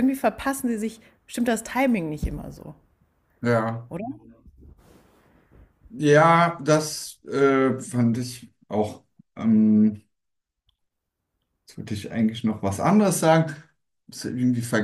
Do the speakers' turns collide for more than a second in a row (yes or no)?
no